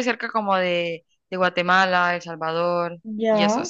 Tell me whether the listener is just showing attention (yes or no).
yes